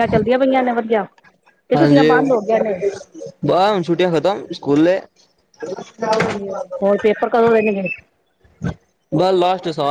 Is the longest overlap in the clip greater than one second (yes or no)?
no